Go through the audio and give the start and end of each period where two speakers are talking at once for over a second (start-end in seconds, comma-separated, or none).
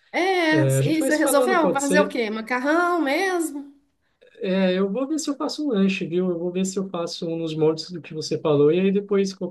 0.5-2.1